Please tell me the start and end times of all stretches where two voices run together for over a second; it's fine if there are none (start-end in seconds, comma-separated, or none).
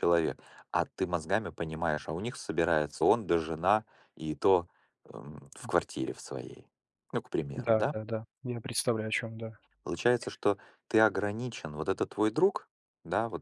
none